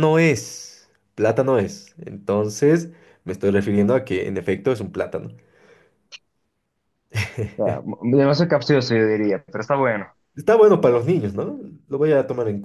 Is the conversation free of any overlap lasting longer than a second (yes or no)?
yes